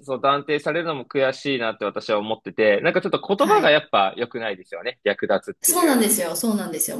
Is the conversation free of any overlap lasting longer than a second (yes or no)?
yes